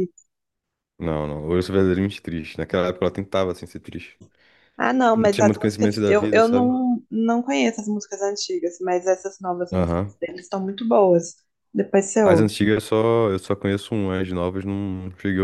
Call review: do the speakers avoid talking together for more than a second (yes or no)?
no